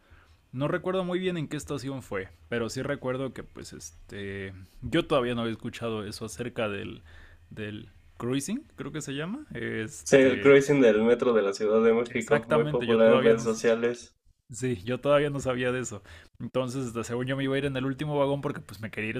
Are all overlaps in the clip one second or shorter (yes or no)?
no